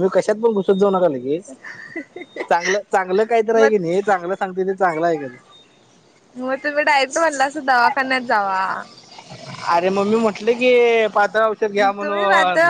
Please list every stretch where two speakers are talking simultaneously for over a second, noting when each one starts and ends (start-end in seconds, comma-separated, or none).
none